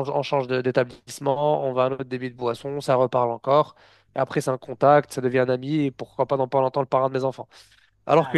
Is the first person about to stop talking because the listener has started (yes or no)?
no